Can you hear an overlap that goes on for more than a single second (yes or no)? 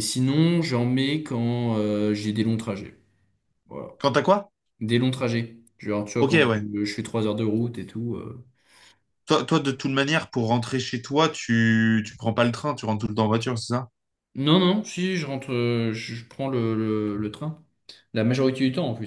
no